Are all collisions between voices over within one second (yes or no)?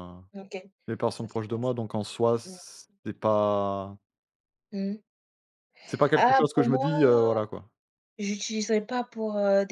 no